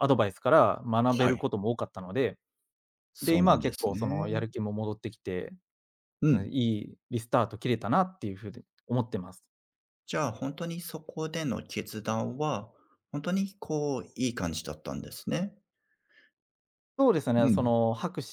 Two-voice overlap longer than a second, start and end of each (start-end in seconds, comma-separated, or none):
3.2-4.5